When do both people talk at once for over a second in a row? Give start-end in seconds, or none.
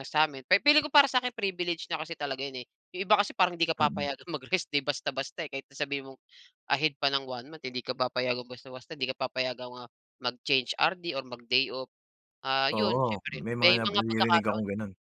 12.7-14.6